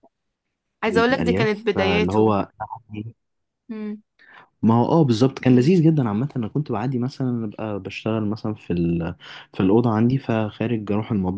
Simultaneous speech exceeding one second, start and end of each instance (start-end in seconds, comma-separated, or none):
0.9-2.4